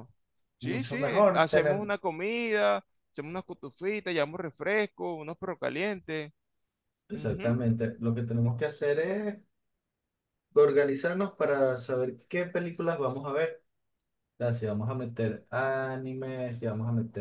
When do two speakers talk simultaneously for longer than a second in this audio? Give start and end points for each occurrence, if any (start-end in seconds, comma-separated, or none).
0.6-1.9